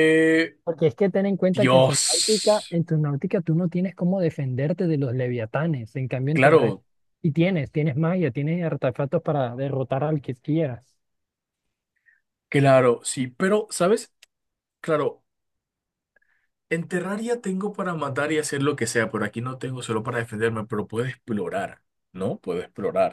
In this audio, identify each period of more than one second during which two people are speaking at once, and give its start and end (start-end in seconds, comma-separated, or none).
1.5-2.8